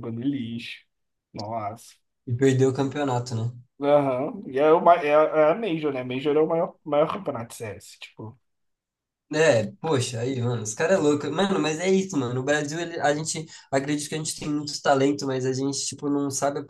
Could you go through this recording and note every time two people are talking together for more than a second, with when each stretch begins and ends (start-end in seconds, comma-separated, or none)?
none